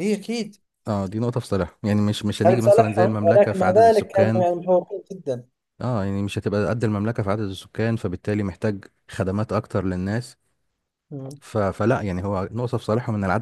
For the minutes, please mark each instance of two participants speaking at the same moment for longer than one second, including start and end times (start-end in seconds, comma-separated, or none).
2.5-4.5